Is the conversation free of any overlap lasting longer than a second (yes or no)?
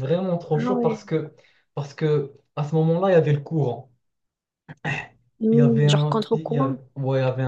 no